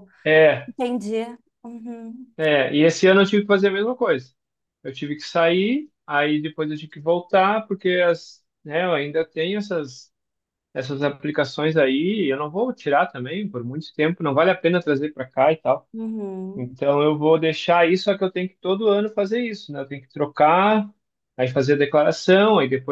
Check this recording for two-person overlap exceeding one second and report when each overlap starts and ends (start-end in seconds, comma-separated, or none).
none